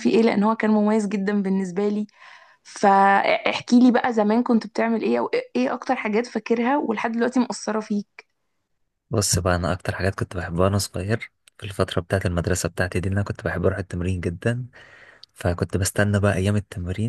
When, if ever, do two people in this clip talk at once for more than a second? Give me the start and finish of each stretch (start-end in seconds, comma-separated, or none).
none